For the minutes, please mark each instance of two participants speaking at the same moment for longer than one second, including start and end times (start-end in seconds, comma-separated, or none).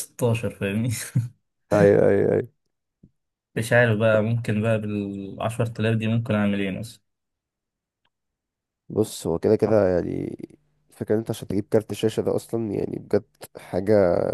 none